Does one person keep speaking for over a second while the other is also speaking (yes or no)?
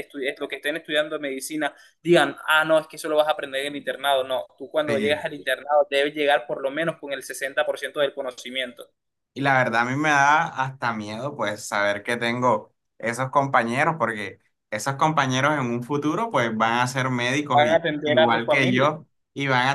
yes